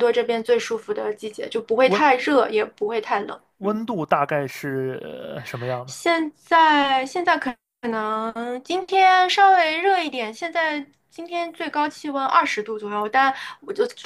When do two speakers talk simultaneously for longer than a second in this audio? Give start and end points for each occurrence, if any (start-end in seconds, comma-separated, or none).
none